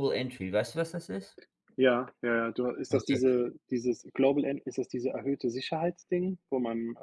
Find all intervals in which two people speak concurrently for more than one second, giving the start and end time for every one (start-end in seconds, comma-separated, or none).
none